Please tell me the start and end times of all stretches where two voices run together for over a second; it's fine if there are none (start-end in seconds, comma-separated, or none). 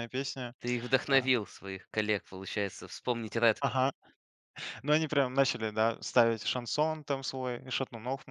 none